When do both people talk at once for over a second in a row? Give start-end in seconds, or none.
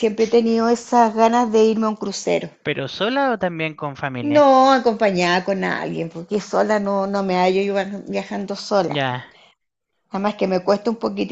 none